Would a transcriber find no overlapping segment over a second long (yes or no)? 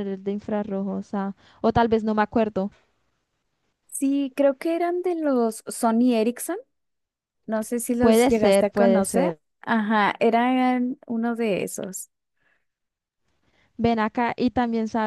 no